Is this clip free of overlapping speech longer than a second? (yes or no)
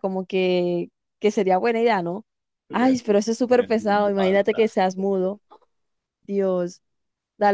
no